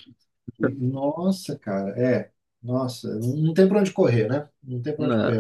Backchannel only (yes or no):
yes